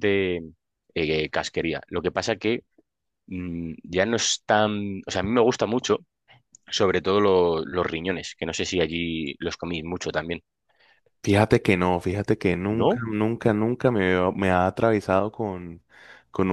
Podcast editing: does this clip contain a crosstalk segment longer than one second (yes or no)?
no